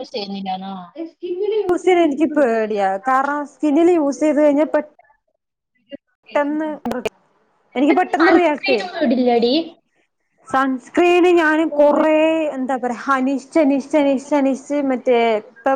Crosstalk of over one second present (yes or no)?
yes